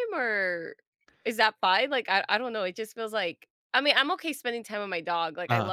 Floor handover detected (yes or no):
no